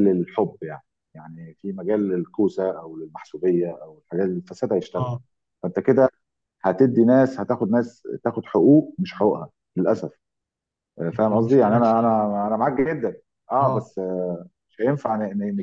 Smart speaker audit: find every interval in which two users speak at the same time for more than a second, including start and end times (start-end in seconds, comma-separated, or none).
11.1-12.4